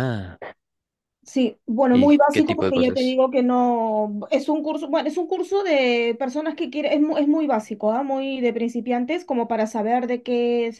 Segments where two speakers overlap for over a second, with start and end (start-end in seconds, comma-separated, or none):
1.9-3.2